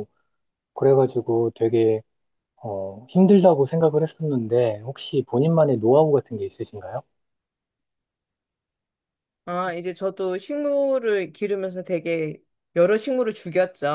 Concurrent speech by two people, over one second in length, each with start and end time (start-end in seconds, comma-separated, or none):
none